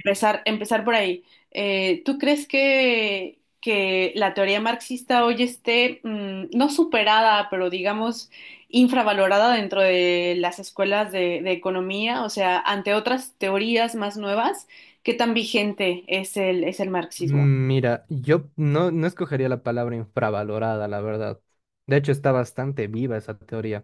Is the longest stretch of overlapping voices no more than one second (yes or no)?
yes